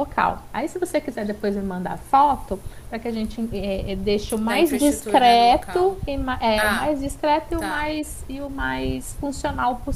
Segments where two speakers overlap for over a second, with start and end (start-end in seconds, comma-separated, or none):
4.4-5.9